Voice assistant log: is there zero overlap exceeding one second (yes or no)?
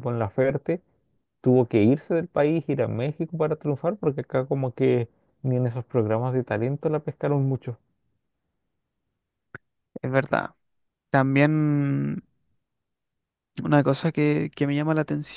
yes